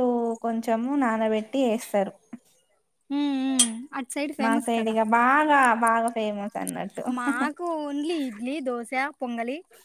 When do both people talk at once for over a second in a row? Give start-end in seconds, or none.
none